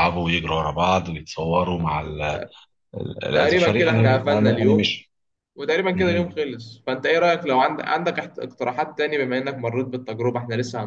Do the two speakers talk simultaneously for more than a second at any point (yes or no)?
yes